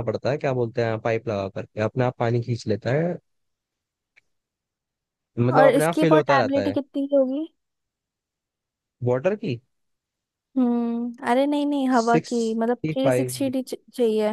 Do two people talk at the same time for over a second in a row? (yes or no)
yes